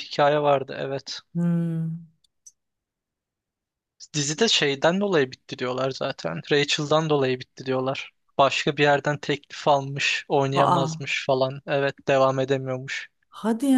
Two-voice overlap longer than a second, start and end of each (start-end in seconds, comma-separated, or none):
none